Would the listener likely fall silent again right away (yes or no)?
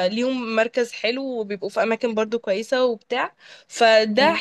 yes